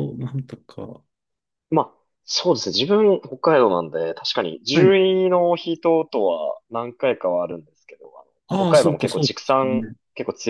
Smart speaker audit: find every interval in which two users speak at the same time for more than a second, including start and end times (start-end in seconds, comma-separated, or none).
8.5-9.9